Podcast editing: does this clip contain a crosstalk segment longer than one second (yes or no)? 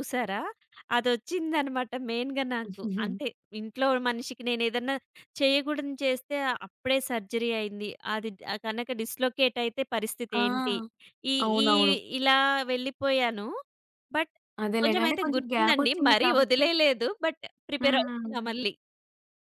yes